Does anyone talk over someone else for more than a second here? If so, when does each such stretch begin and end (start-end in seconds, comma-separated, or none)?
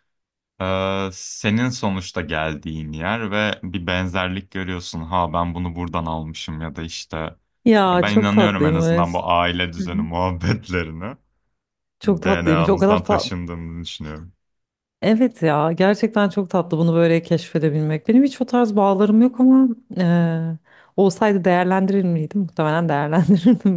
7.8-9.1, 12.0-13.3